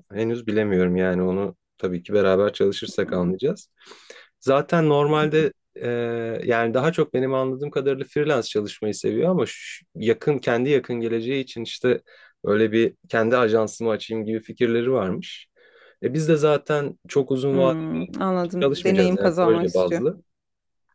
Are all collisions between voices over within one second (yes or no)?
no